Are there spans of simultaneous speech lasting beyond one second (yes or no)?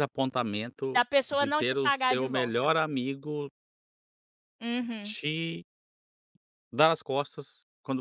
yes